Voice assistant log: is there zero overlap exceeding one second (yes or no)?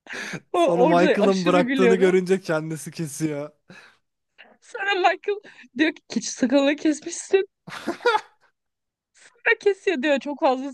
no